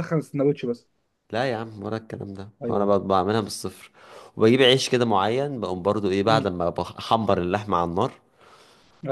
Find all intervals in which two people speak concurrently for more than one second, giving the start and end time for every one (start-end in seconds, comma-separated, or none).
none